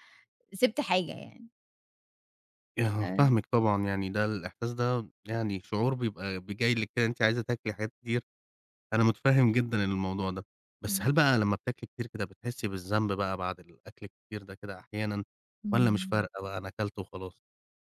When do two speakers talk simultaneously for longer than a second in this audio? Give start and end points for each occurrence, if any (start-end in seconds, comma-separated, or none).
none